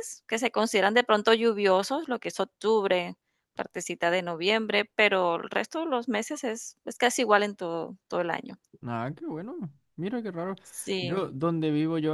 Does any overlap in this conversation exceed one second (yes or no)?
no